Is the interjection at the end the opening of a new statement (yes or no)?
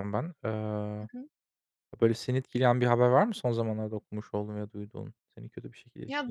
yes